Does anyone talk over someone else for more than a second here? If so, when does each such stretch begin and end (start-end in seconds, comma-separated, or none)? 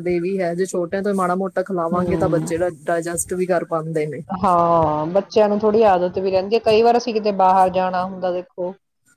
none